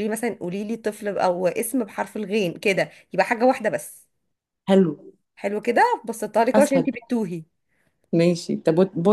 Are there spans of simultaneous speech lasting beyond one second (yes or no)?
no